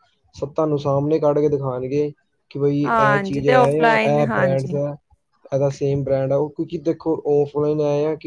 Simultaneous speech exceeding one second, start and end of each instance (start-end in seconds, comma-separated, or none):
2.9-4.8